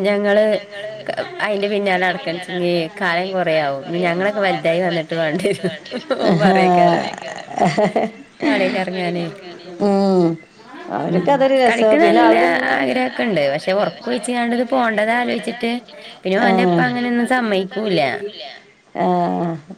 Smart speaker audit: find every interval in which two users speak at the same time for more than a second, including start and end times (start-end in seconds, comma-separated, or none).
12.8-15.7, 16.5-18.0